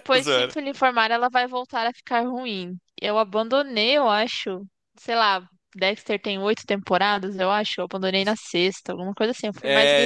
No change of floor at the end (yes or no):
no